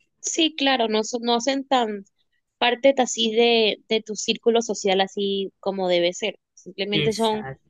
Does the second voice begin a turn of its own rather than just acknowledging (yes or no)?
no